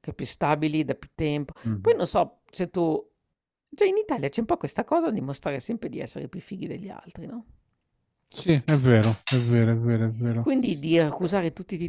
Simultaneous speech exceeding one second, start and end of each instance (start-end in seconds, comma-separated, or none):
none